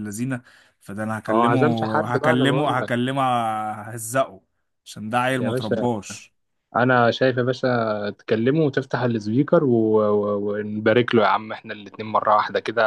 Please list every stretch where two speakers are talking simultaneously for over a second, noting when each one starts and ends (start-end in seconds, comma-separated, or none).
1.3-2.9